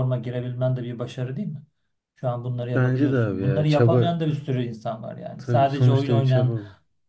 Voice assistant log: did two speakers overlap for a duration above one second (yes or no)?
yes